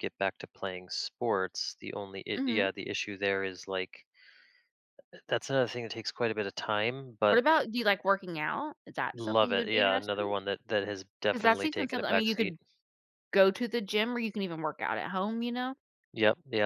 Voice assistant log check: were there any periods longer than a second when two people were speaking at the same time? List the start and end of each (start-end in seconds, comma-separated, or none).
9.1-10.3, 11.3-12.5